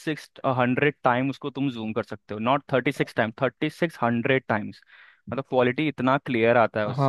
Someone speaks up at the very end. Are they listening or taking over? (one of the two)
taking over